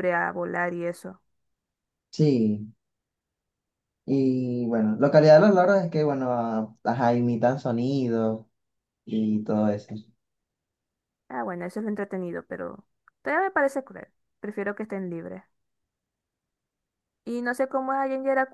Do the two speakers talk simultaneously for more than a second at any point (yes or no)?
no